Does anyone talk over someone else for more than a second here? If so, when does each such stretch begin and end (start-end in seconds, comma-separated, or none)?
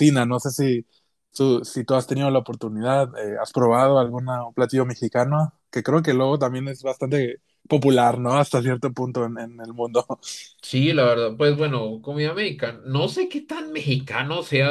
none